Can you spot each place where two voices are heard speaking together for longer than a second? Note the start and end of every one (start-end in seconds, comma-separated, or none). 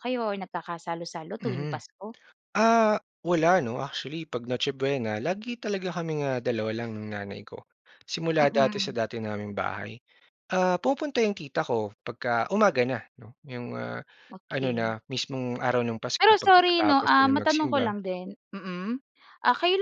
16.2-18.0